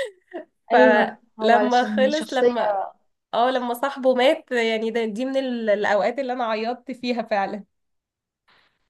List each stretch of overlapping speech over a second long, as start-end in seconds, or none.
0.7-2.5